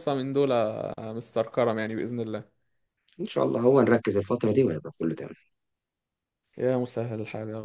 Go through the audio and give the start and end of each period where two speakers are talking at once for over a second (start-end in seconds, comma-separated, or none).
none